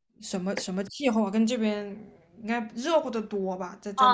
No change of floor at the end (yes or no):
no